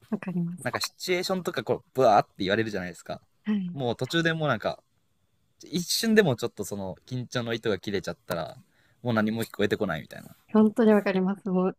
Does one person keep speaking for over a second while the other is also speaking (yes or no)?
no